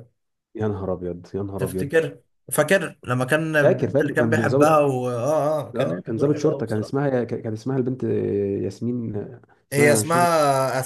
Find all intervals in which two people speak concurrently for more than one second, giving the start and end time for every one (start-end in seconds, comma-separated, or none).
3.6-4.8, 5.8-7.0